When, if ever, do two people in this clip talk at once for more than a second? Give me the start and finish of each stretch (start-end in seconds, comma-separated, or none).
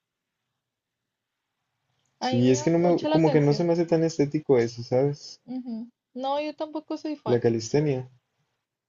2.2-3.7